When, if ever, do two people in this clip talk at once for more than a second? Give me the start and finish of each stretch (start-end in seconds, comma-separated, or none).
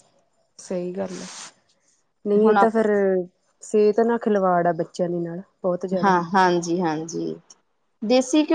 none